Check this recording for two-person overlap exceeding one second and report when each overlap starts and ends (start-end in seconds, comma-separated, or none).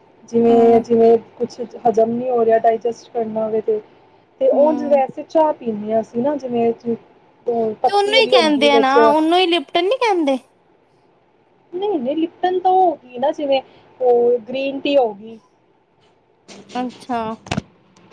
none